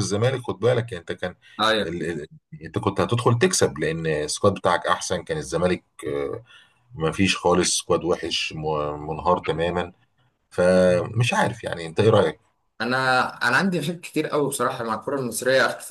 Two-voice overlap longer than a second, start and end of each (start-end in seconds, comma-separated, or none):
none